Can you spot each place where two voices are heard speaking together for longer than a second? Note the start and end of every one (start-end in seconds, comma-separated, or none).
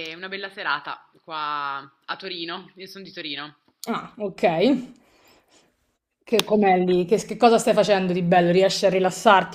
none